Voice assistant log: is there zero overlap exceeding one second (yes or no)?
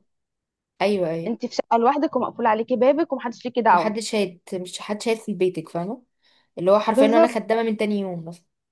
yes